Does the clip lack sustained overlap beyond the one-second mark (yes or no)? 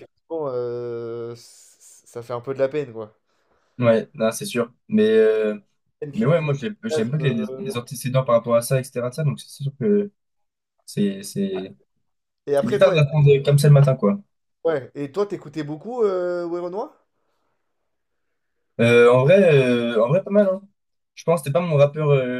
no